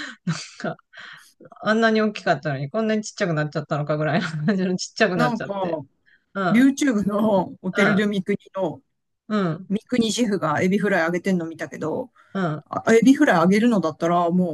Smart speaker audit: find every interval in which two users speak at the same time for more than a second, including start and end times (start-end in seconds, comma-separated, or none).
none